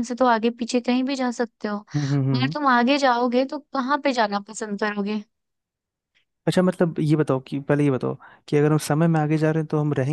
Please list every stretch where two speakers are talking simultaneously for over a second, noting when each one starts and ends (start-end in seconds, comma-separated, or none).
none